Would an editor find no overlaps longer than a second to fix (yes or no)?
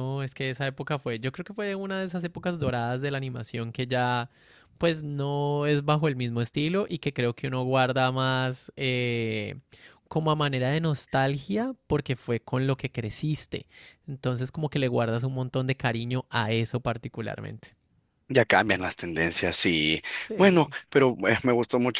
yes